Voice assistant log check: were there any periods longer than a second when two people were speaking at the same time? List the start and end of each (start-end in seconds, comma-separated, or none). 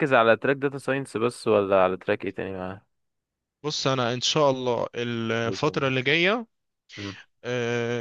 none